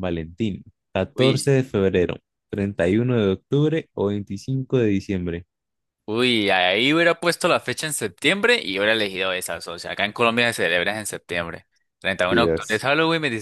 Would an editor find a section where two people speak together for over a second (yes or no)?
no